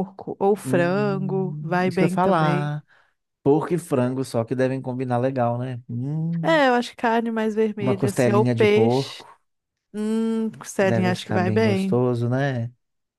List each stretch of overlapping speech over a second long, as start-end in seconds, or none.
0.6-2.7, 7.8-9.2, 10.8-12.0